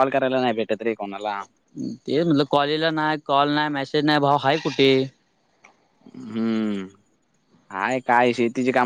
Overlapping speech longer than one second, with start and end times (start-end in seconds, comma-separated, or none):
none